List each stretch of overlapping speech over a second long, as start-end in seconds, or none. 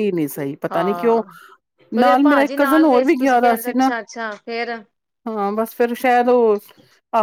2.0-3.9